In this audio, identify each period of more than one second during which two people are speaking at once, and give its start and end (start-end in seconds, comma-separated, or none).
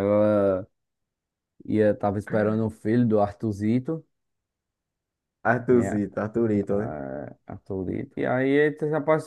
none